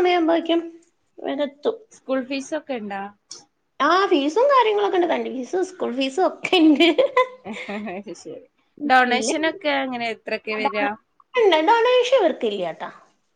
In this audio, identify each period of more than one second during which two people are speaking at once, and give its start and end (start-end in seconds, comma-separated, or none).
none